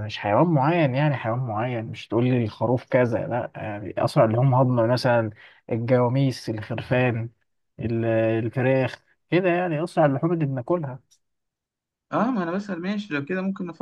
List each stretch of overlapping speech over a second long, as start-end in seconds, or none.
none